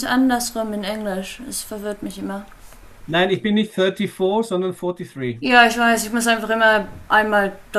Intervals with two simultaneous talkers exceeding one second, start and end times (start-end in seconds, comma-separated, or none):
none